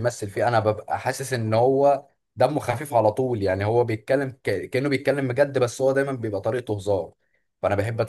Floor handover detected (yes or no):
no